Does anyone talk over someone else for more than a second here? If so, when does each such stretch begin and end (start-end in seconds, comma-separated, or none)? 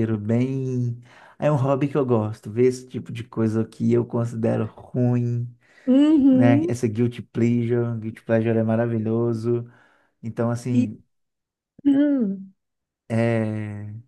none